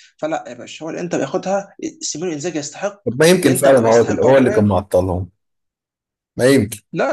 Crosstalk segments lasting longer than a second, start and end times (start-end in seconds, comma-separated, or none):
3.4-4.7